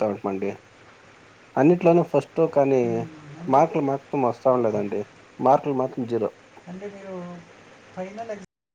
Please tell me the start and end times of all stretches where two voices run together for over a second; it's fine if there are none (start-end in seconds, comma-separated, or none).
none